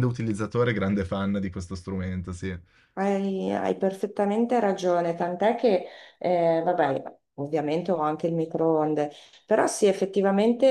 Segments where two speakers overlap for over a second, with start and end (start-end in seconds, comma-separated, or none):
none